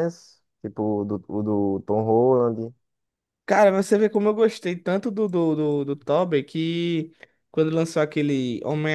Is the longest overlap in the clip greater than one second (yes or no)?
no